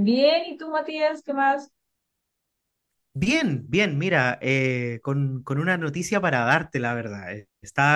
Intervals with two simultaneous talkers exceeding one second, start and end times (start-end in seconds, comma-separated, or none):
none